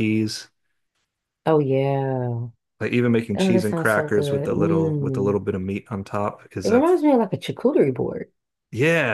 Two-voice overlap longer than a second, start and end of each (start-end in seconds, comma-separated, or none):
3.4-5.4